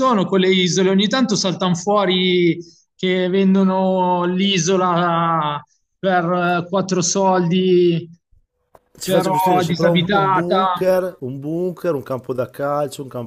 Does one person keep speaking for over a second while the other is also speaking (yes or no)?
yes